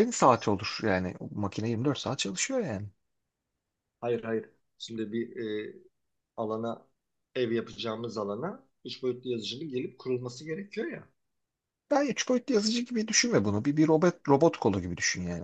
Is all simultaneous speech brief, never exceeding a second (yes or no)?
yes